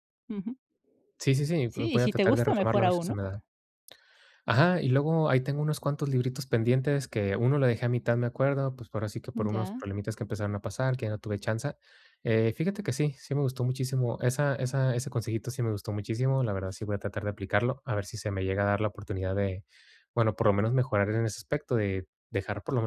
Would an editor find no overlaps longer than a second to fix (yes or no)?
no